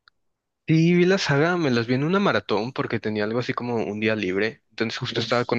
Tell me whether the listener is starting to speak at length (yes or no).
no